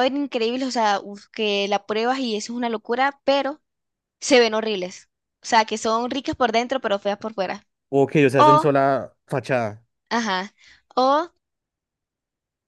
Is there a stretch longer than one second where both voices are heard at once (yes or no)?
no